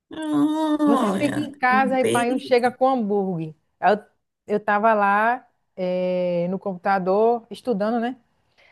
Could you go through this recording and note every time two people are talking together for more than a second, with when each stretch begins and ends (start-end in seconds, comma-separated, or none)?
0.8-2.7